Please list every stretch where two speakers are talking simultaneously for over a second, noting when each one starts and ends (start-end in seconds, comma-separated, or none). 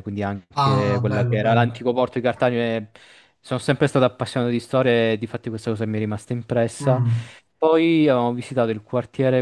0.5-1.8